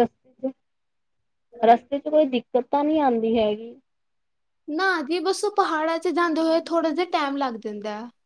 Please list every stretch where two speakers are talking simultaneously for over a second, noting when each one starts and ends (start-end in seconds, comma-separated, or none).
none